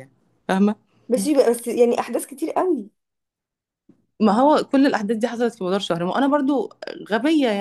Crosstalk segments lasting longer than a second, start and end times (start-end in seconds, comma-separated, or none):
none